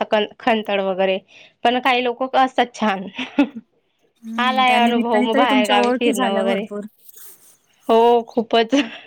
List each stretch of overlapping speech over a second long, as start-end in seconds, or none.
4.4-6.7